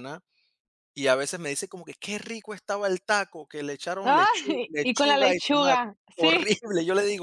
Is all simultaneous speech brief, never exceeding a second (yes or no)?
no